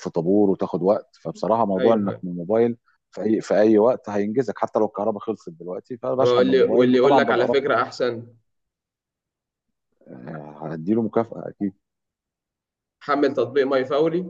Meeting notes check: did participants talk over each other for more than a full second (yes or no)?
yes